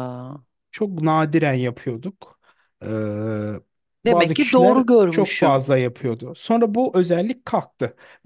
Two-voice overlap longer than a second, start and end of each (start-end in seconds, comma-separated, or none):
4.0-5.6